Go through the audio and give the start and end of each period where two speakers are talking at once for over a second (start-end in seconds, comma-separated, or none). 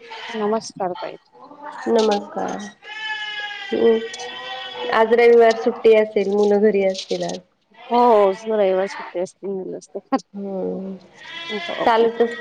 none